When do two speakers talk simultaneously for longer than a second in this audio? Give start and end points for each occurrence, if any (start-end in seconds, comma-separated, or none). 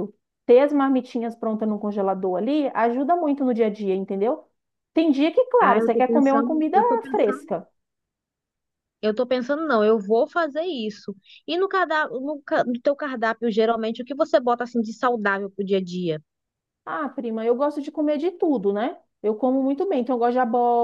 5.6-7.5